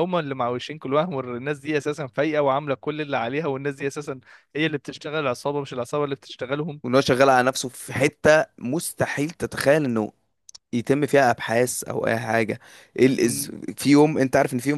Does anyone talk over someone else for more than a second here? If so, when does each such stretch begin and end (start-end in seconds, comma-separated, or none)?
none